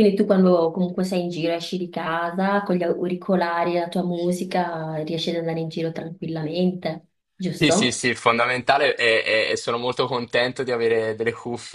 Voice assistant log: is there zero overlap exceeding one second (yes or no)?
yes